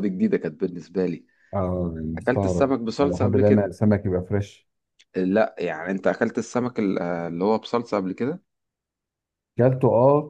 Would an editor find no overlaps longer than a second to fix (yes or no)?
no